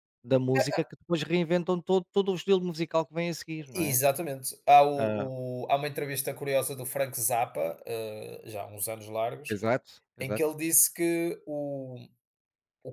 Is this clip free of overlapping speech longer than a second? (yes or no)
yes